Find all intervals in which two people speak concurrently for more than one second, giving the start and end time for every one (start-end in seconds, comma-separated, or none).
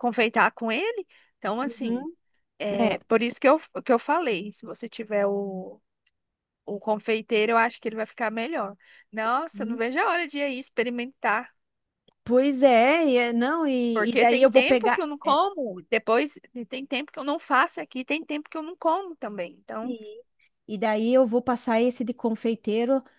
13.9-15.4